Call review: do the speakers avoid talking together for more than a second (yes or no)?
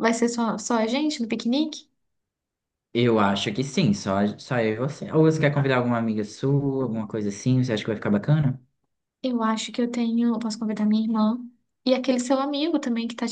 yes